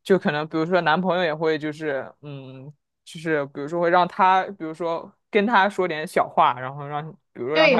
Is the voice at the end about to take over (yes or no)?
yes